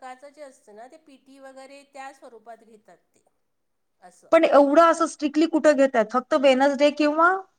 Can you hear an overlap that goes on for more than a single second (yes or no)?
no